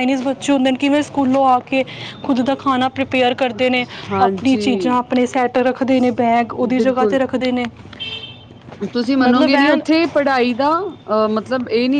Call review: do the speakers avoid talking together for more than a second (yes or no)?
yes